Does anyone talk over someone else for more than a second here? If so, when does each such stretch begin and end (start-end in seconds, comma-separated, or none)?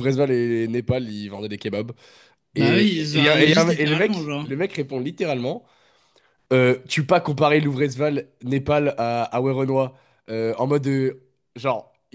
2.5-4.5